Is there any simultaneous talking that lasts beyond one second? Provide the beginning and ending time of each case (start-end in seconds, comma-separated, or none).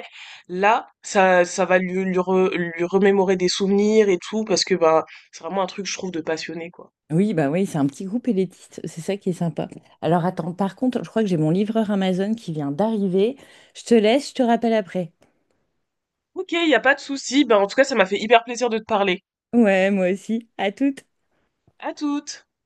none